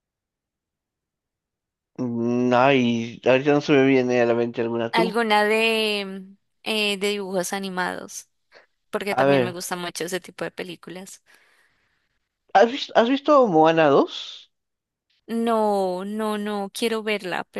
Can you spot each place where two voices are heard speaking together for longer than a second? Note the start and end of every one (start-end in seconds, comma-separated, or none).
none